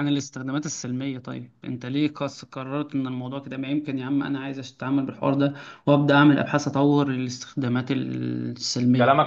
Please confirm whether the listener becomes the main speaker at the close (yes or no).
yes